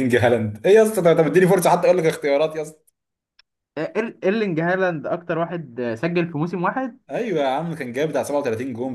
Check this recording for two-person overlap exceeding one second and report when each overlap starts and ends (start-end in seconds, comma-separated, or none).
none